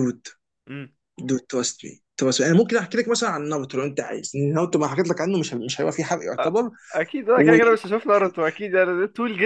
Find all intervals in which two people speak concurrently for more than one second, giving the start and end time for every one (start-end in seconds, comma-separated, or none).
none